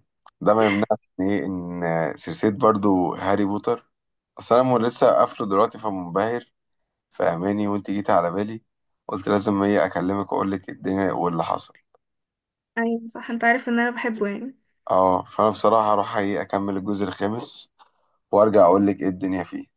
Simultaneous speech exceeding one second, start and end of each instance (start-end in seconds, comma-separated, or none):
none